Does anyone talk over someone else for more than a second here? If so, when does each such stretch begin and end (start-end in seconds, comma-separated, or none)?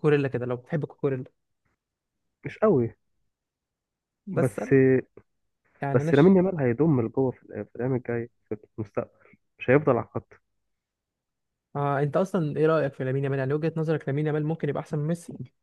none